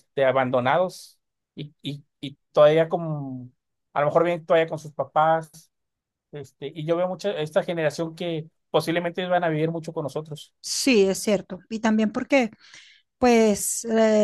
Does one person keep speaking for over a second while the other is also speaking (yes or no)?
no